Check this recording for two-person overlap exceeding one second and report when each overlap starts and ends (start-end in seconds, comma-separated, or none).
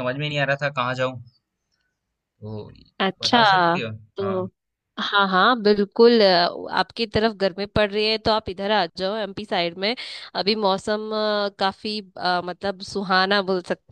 none